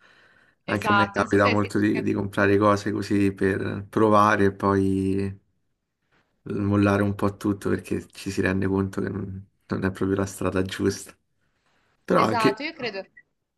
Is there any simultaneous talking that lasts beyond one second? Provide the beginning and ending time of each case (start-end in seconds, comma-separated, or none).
0.7-2.1